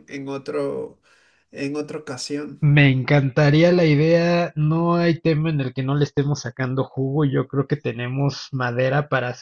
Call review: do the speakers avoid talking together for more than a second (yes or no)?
yes